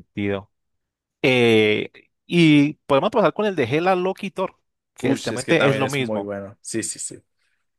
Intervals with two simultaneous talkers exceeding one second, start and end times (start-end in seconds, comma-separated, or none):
5.0-6.3